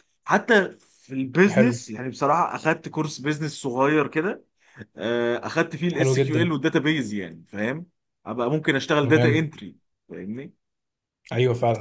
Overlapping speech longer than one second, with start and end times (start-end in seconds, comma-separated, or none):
none